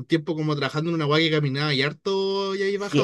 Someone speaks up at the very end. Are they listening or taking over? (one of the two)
taking over